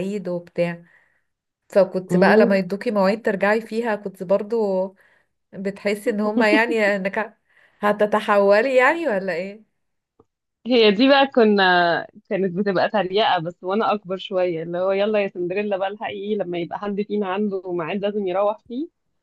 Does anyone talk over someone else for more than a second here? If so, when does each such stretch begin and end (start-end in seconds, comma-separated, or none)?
none